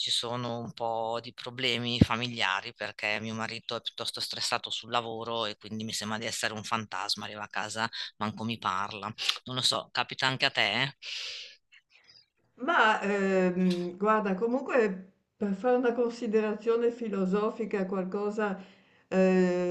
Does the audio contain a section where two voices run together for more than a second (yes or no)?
no